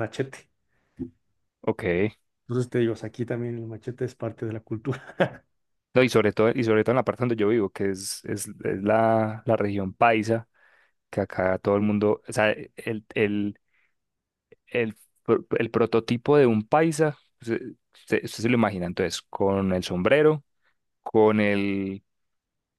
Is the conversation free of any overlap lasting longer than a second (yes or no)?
yes